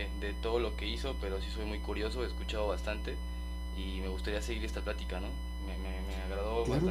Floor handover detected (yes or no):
yes